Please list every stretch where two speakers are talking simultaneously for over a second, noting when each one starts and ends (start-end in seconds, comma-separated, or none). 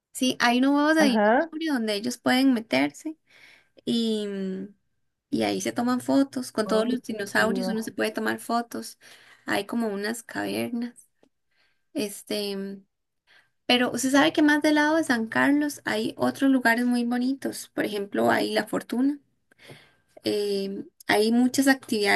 6.7-7.9